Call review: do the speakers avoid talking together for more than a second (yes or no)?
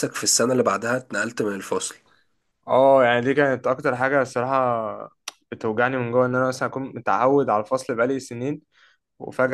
yes